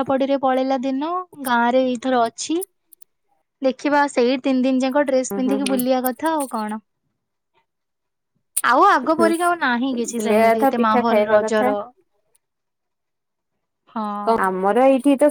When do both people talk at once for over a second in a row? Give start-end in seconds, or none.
10.2-11.7